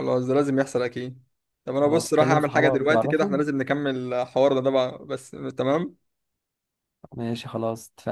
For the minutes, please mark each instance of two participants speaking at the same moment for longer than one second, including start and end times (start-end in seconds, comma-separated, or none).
1.8-3.4